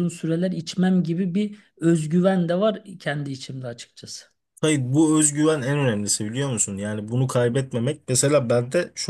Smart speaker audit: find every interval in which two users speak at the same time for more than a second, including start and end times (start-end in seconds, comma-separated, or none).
none